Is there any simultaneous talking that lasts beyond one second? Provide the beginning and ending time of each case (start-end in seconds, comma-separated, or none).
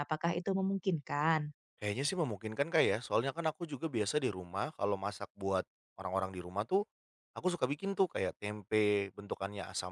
none